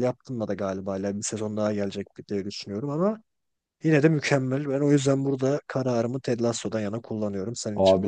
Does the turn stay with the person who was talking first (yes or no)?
no